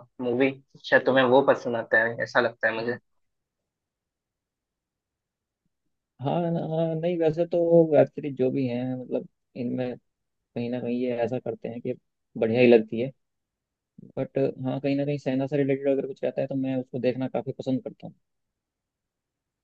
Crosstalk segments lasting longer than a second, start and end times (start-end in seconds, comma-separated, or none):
none